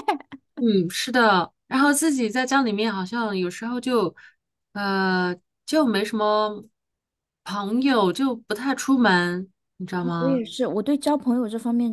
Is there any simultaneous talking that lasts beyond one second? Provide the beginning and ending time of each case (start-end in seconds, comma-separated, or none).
none